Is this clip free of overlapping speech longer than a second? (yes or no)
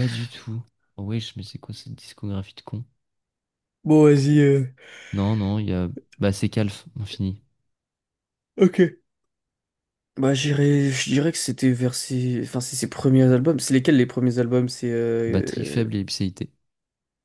yes